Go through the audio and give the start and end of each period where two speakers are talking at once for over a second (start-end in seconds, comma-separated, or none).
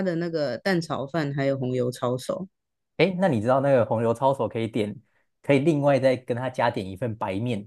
none